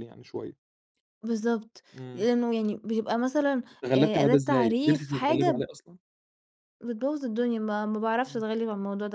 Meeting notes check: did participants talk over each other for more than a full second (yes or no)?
yes